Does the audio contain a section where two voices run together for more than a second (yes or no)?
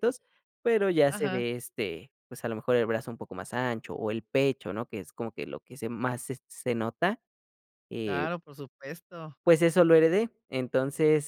no